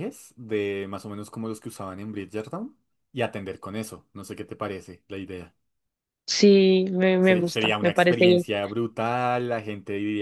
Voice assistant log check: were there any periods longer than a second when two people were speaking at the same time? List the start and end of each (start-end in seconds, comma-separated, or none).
7.2-8.4